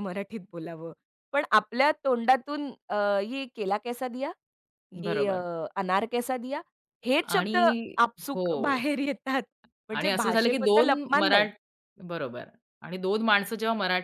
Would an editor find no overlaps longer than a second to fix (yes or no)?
no